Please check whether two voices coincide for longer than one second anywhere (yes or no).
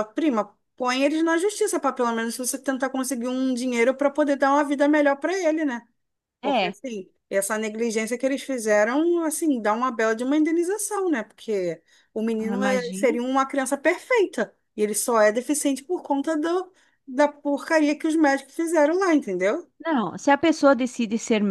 no